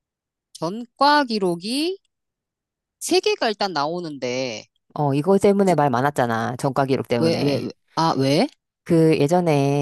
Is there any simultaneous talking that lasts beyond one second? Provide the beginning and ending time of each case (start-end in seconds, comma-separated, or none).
none